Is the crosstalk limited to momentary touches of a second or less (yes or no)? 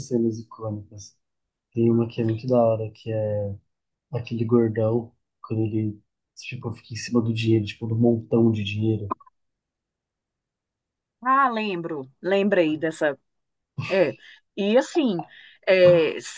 yes